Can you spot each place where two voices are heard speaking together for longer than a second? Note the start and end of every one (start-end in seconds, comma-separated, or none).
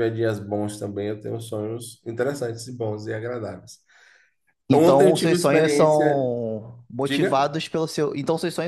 4.7-6.3